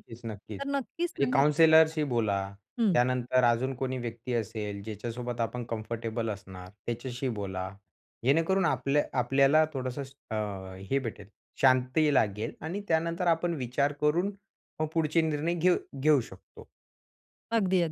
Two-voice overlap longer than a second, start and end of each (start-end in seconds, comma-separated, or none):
0.6-1.9